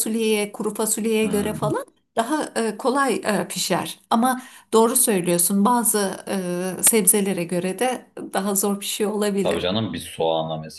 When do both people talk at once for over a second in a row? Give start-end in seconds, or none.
none